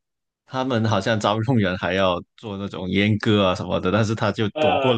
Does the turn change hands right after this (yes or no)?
no